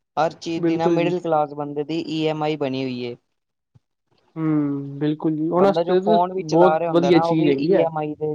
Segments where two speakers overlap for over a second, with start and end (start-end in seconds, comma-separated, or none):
5.6-7.8